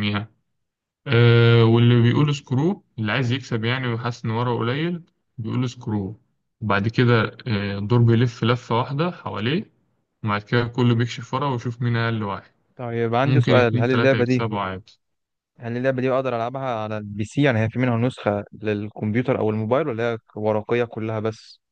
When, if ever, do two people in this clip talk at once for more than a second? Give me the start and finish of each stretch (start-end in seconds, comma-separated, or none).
13.2-14.5